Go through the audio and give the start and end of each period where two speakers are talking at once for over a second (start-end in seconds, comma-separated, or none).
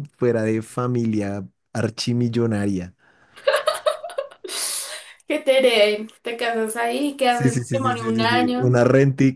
7.3-8.8